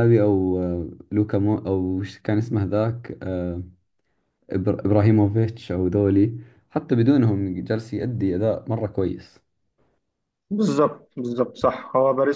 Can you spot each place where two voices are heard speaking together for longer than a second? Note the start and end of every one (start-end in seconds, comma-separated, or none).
none